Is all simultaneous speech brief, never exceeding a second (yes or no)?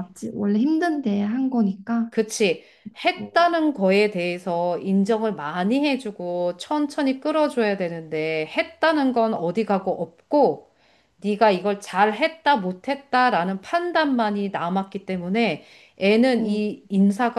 yes